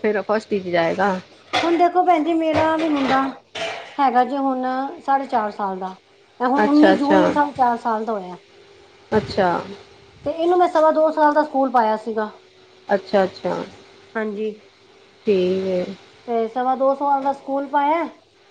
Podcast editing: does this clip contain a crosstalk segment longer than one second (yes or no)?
no